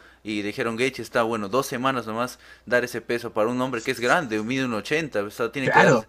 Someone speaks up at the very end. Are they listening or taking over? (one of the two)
listening